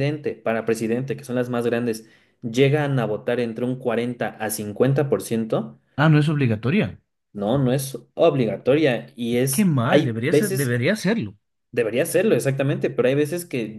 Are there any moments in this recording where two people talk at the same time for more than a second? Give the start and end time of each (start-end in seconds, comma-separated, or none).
9.5-10.8